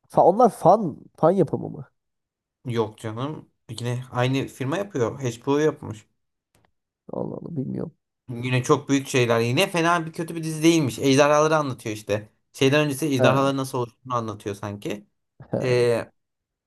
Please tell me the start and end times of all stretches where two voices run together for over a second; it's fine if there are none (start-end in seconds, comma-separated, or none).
none